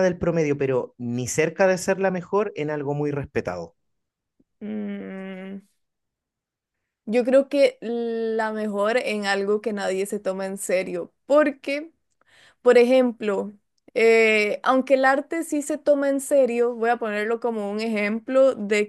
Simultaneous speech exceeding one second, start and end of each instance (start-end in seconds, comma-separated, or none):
none